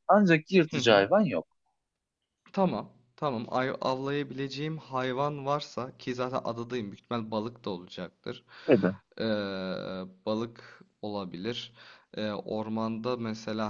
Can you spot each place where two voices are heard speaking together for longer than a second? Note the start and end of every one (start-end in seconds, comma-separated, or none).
none